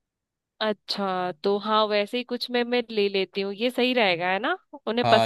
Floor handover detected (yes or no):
yes